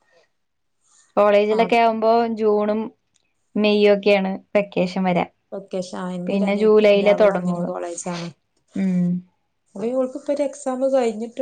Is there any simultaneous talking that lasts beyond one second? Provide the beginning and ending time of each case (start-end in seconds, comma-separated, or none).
6.3-7.7